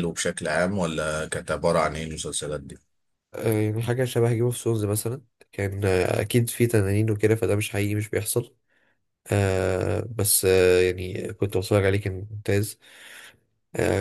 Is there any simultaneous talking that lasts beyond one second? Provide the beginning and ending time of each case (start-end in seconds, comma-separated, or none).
none